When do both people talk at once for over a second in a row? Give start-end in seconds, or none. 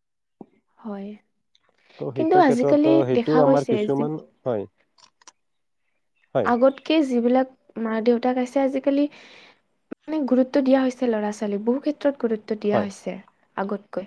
2.2-4.0